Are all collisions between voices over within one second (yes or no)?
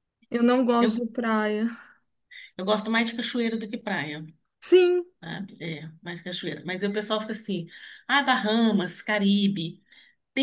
yes